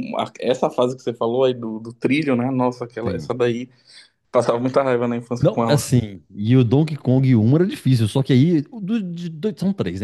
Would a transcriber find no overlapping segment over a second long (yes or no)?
yes